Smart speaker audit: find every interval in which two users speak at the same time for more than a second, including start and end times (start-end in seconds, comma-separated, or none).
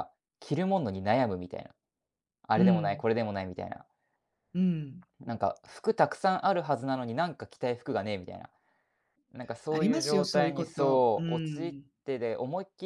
9.7-11.8